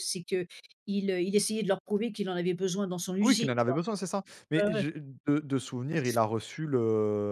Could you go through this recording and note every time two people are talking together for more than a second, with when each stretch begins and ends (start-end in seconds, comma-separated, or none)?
none